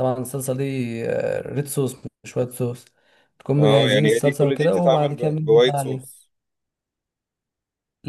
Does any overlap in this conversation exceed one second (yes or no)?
yes